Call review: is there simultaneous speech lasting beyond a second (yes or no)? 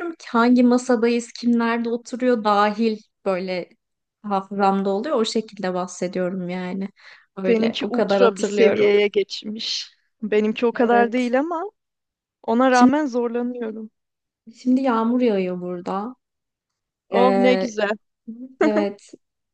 yes